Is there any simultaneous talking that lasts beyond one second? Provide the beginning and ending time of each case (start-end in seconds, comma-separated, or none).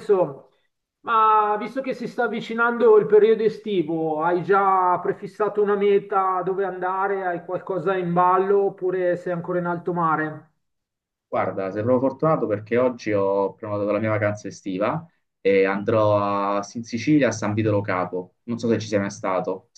none